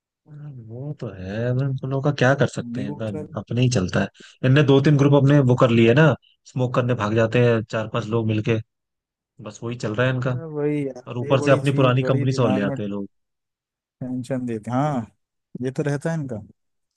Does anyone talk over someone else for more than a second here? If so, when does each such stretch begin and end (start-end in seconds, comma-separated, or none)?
11.1-12.8